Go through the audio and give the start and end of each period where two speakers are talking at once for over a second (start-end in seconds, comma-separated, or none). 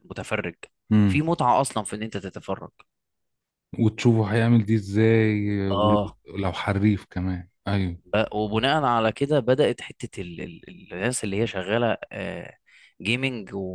none